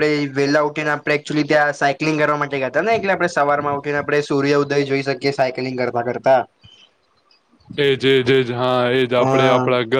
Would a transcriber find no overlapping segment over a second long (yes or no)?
yes